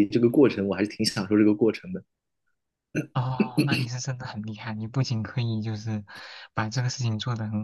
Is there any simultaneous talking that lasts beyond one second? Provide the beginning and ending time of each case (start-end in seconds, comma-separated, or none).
none